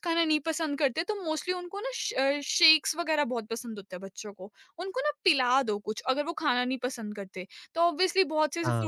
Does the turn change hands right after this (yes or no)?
no